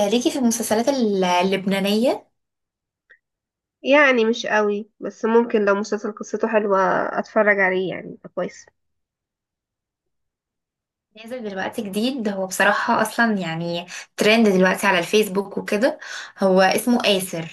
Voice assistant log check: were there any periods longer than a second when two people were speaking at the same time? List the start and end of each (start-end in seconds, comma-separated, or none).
none